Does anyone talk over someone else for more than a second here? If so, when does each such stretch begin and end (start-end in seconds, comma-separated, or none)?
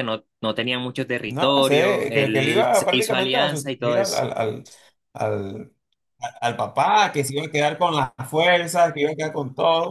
1.2-4.3